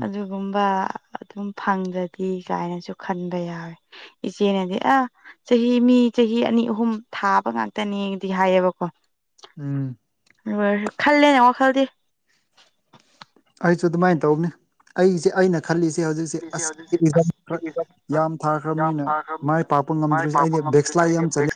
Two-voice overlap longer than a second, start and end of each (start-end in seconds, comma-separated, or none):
none